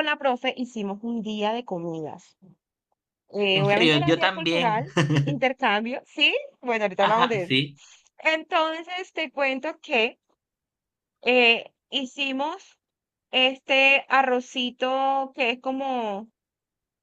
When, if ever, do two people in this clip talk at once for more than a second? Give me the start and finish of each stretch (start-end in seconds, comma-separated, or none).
3.5-4.8